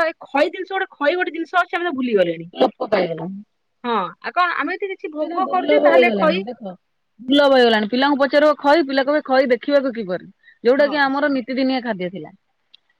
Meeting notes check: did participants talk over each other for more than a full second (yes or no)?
no